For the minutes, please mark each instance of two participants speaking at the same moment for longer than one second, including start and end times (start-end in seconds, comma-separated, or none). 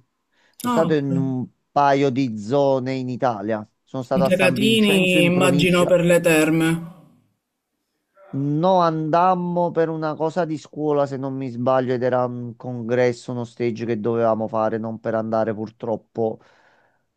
4.1-6.0